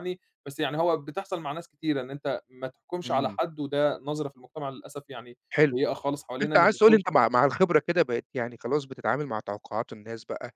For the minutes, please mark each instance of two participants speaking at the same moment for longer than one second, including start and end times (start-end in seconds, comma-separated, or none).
none